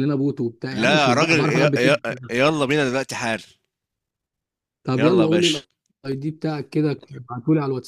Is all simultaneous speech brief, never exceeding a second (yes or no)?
no